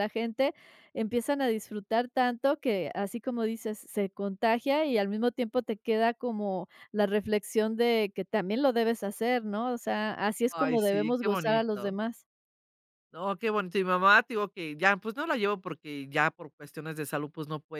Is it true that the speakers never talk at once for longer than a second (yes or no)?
no